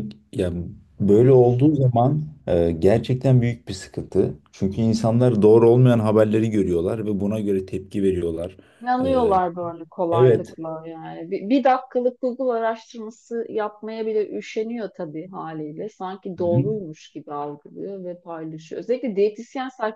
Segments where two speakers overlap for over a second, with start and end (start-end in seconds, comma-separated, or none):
none